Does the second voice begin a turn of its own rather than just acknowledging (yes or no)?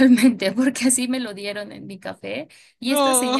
no